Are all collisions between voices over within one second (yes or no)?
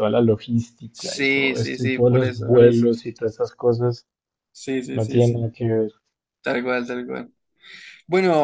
no